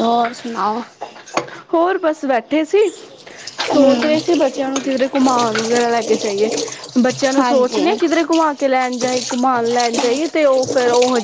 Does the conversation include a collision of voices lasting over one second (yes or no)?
no